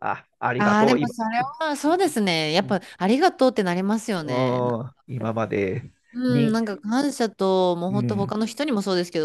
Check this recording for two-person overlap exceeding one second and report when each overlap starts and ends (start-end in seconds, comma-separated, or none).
none